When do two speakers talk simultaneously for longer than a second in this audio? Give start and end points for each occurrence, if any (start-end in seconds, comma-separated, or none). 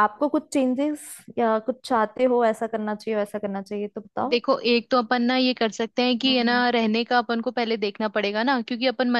none